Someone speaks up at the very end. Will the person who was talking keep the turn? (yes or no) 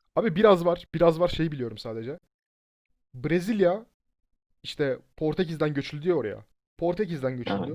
yes